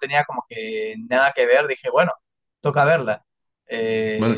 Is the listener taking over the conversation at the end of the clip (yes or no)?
no